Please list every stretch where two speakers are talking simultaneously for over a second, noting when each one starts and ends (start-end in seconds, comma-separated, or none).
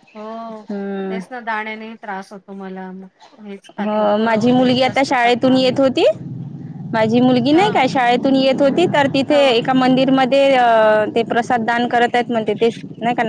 3.8-5.7